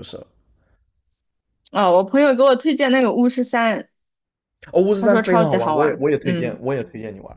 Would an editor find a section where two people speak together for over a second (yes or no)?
yes